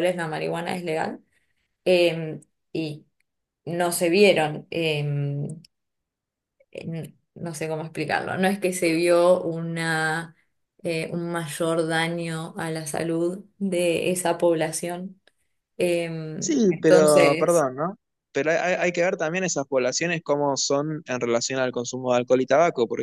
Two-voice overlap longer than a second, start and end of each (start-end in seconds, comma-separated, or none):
16.4-17.7